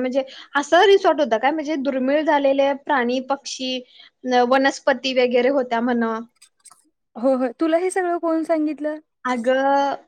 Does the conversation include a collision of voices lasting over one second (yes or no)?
no